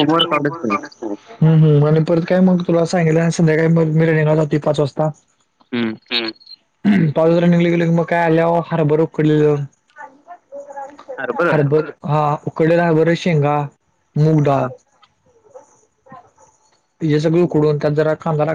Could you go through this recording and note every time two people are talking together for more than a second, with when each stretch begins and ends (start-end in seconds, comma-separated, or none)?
none